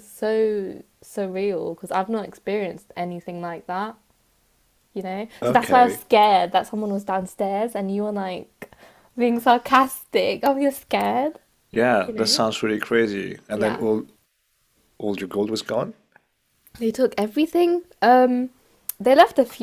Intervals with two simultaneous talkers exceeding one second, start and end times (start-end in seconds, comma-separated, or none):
none